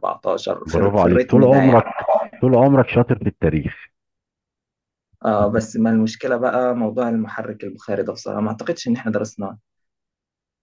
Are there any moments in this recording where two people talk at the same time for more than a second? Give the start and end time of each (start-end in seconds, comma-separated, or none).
0.7-1.9